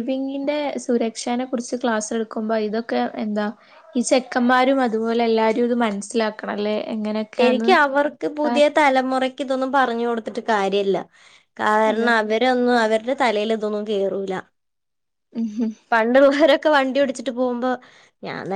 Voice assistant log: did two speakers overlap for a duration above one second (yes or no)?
no